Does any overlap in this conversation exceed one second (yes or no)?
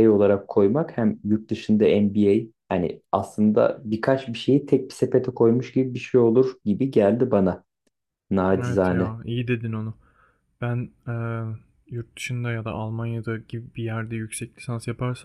no